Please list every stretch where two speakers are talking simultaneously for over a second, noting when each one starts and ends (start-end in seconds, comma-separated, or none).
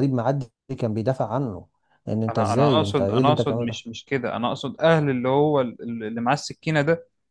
2.3-3.9